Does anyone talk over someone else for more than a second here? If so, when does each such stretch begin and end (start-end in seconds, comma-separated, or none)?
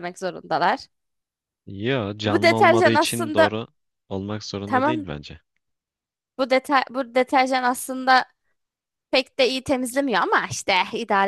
2.2-3.6